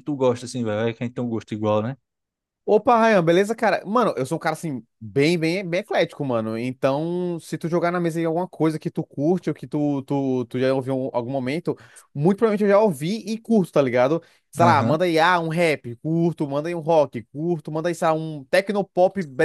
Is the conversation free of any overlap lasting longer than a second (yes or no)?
yes